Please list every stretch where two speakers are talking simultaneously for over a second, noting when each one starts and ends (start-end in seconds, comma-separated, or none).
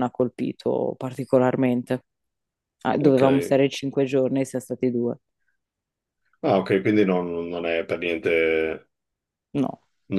none